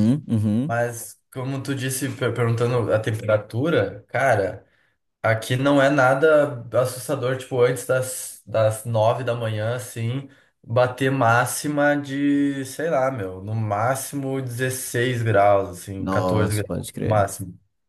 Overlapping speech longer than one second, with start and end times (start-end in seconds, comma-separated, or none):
16.0-17.3